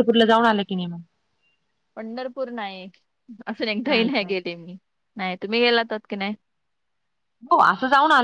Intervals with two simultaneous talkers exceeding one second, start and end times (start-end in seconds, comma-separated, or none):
none